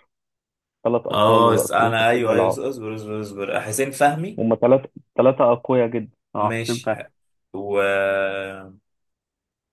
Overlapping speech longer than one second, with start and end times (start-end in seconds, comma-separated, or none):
1.1-2.6